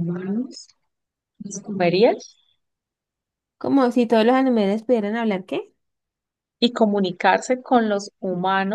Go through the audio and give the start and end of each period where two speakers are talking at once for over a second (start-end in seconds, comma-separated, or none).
none